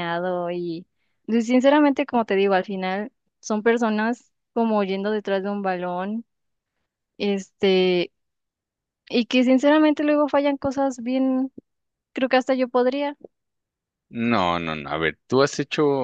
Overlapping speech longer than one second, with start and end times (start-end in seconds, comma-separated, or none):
none